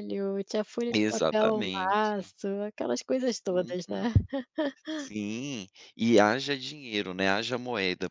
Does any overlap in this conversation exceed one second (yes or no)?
yes